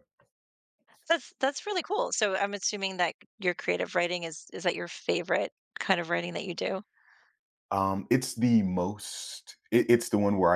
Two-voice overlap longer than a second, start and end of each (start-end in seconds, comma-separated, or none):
none